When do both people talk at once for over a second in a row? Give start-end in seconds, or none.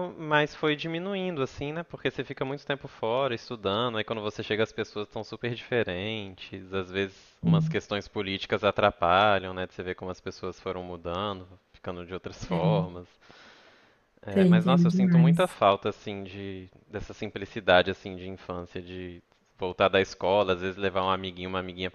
14.3-15.6